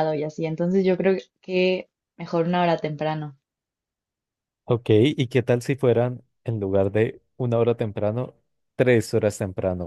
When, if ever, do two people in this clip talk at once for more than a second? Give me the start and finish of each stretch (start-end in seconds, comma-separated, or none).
none